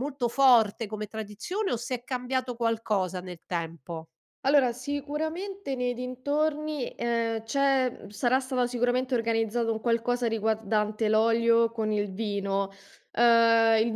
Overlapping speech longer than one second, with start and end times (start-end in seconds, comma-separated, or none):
none